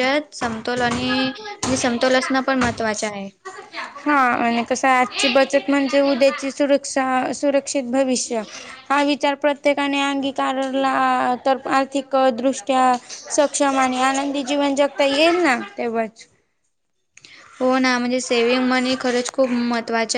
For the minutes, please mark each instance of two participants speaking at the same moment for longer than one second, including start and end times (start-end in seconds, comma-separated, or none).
none